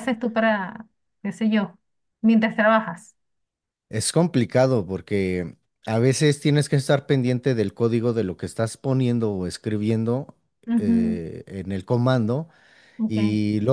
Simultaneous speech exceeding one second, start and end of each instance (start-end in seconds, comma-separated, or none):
none